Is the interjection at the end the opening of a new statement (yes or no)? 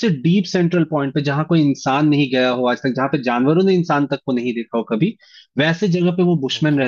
no